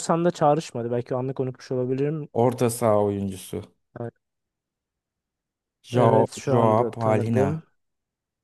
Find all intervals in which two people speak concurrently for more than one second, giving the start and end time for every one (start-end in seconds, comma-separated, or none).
5.9-7.6